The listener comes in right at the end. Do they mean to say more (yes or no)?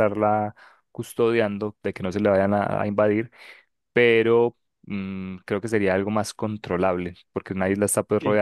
no